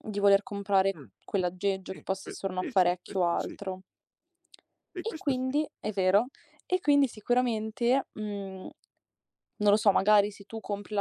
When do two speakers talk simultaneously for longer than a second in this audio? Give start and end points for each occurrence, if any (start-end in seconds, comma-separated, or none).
1.9-3.6